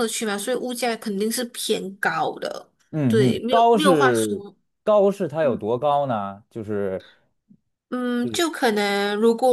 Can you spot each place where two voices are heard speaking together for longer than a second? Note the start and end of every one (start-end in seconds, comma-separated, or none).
3.1-4.4